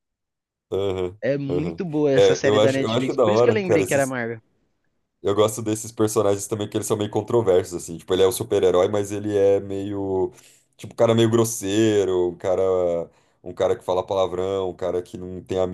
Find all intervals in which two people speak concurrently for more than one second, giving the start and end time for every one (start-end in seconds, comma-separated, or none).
1.2-4.2